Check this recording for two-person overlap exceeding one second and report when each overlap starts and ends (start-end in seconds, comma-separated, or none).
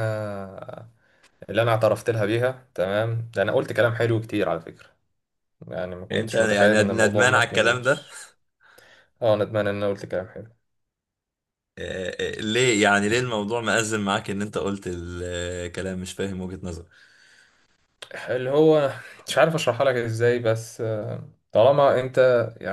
6.1-7.9